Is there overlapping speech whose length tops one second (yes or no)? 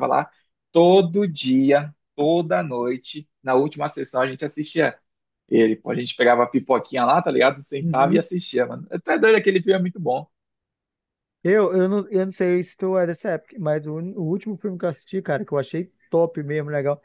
no